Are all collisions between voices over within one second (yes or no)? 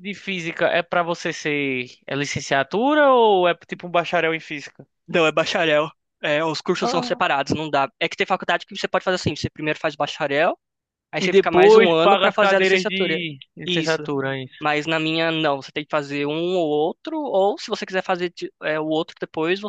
no